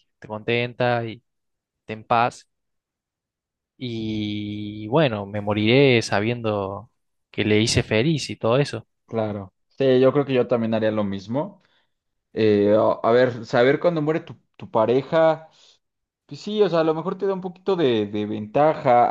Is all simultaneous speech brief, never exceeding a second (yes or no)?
yes